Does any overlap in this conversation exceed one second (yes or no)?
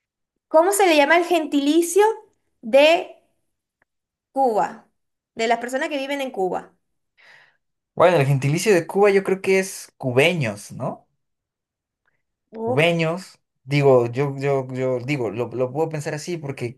no